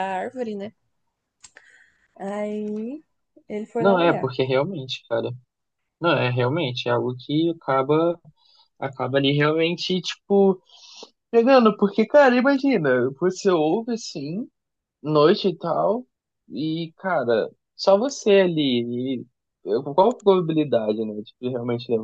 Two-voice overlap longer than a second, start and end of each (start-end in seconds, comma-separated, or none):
none